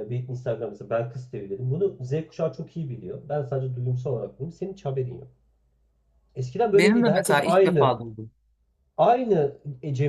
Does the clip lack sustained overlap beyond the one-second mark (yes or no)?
no